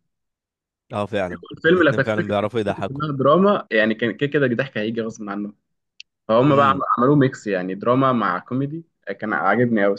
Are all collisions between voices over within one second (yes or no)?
no